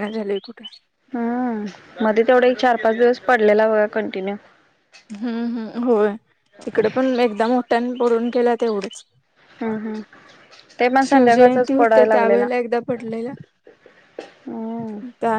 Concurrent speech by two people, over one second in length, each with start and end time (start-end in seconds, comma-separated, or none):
11.1-12.5